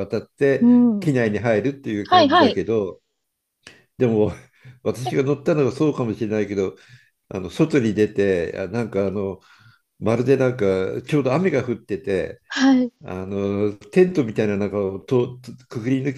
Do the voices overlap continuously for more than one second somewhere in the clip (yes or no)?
no